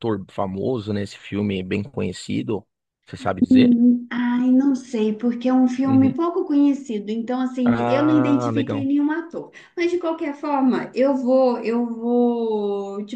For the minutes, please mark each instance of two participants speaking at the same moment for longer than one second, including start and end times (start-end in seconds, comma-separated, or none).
7.6-8.9